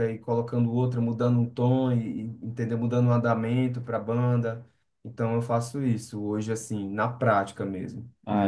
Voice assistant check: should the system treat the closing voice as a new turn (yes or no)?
yes